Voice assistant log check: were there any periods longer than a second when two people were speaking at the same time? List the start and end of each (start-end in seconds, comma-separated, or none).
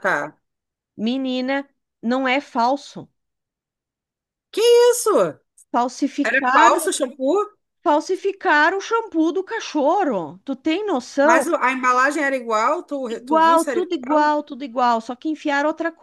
13.1-14.3